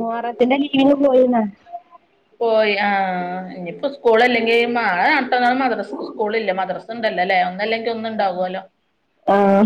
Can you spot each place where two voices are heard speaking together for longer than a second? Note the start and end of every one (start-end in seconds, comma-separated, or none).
none